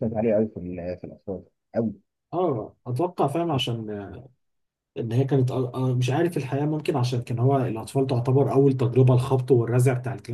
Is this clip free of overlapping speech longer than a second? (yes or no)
yes